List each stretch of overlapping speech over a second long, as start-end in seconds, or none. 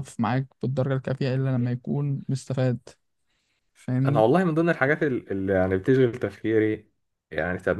none